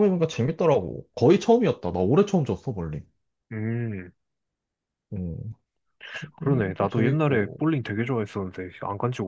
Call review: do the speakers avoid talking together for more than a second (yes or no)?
no